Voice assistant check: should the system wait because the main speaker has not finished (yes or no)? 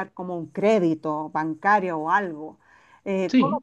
yes